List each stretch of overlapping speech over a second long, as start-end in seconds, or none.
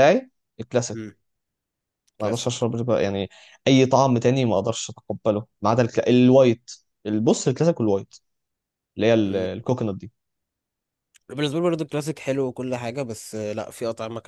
none